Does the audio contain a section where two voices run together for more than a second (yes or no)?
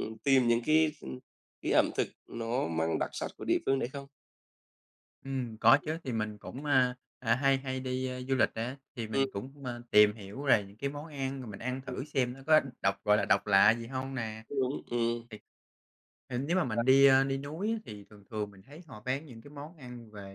no